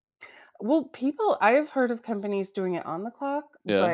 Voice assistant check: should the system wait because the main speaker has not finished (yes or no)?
yes